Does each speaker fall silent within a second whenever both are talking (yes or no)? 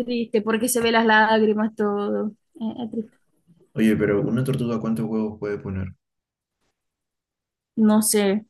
yes